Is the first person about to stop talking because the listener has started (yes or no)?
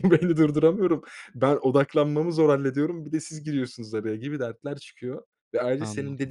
no